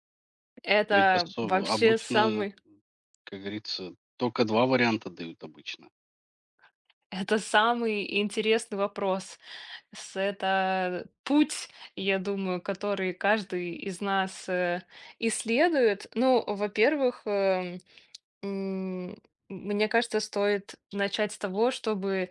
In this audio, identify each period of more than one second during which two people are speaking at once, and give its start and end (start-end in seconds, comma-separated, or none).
0.9-2.5